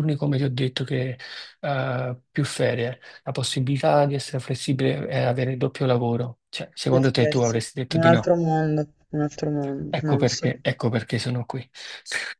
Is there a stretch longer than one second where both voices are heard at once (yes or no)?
yes